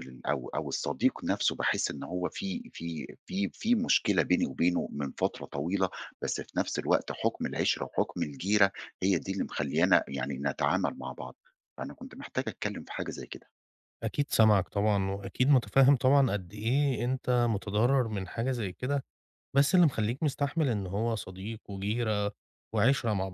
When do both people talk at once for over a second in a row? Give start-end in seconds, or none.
none